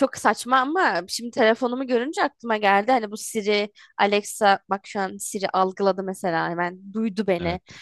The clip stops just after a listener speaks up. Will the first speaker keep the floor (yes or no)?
yes